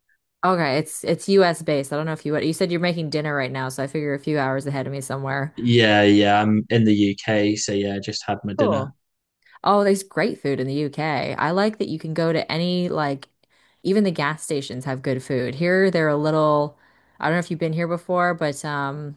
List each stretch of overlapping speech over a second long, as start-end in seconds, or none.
none